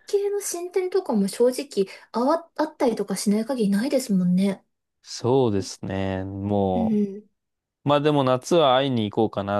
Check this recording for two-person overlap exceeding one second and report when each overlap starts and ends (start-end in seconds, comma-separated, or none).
none